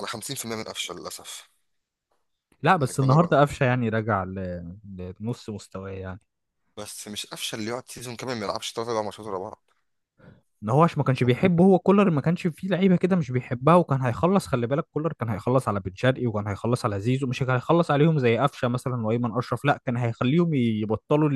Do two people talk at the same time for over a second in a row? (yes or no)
no